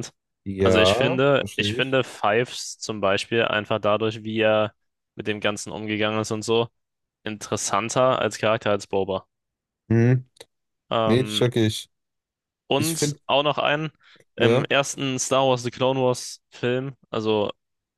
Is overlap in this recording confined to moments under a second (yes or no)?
no